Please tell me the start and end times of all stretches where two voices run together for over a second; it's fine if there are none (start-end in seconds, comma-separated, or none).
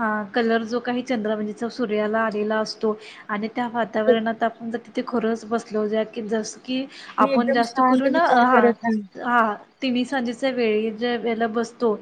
7.2-8.7